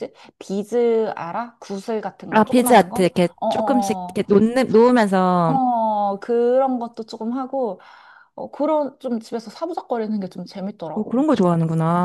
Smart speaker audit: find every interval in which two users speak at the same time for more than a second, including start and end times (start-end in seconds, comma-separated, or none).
2.3-4.2